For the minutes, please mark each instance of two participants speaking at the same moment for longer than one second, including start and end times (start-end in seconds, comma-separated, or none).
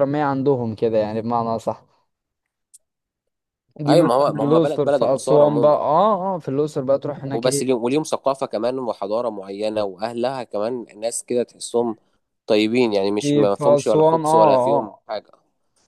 3.9-5.8, 13.2-15.0